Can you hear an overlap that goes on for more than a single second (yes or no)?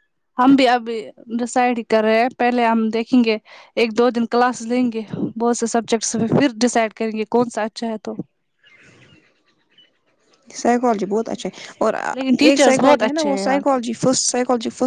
yes